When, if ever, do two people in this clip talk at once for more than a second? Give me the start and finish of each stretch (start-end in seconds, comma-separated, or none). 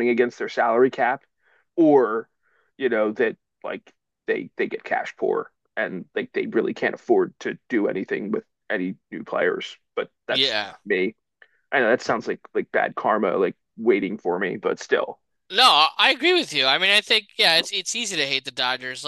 none